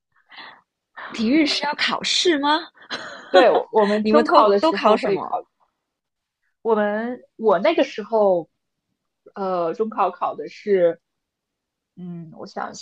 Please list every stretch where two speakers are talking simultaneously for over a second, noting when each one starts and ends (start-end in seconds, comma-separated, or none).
4.0-5.4